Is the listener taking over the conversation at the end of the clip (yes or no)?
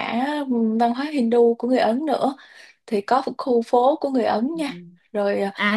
yes